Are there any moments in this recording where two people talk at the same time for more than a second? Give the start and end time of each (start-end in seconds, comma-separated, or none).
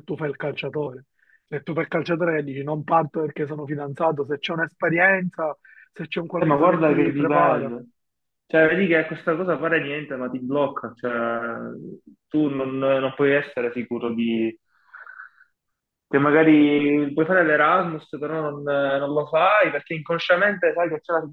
6.4-7.7